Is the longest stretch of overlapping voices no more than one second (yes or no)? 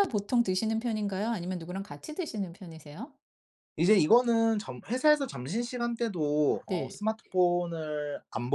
yes